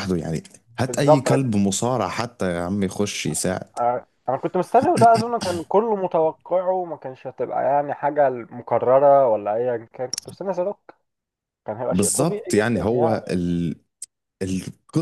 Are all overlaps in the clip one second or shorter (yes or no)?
no